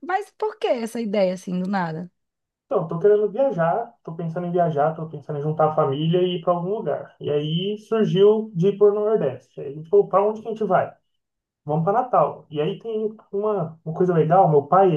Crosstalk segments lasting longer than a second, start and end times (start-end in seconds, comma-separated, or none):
none